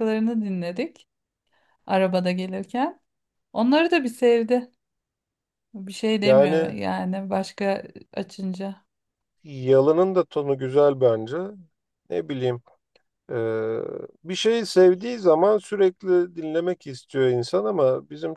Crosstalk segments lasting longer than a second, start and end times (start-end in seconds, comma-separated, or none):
none